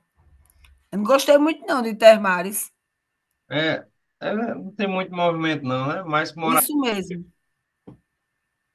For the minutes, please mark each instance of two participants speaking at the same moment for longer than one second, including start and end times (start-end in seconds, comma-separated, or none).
none